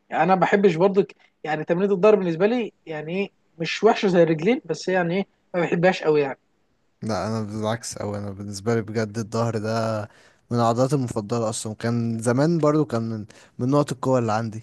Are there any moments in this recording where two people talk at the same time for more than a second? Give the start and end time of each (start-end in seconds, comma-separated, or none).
none